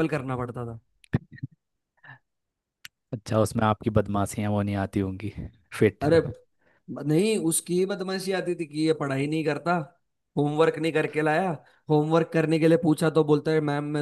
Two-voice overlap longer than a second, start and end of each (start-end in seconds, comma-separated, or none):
none